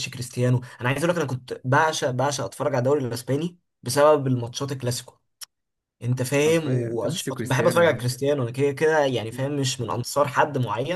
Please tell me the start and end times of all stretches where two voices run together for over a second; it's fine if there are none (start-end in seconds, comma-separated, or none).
6.4-8.0